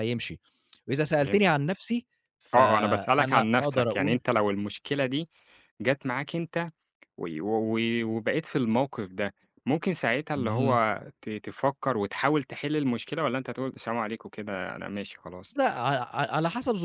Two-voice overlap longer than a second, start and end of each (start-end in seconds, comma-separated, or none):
2.5-4.2